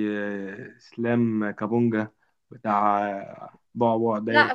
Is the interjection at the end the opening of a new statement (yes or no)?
yes